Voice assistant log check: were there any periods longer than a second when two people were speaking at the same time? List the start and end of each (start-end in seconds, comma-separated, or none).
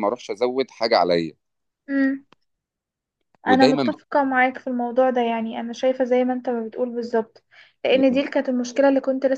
none